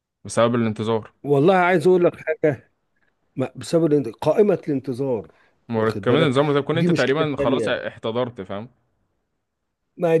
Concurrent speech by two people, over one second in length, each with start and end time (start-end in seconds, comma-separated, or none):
5.8-7.8